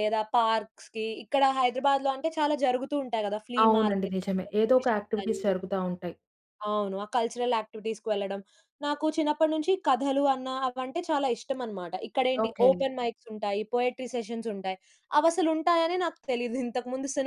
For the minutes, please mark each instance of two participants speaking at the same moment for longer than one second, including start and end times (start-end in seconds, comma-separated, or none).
3.6-5.5